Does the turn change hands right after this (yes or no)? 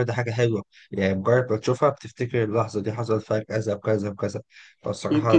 yes